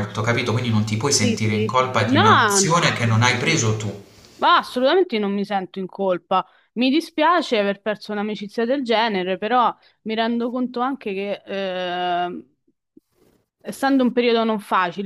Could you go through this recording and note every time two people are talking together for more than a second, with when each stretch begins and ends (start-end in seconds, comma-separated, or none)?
1.2-2.7